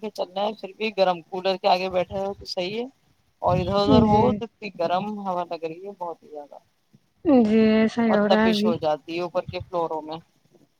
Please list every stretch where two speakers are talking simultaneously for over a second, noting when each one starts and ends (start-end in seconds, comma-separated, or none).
none